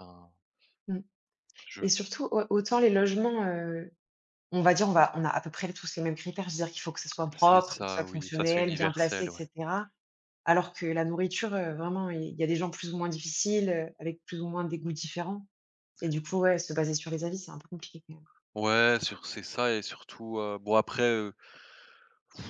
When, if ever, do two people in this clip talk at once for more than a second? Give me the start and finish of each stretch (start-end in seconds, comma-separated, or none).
7.4-9.4